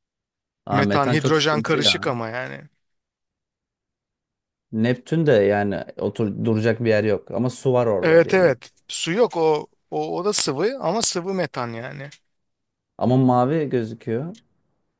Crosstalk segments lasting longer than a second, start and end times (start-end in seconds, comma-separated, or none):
0.7-2.0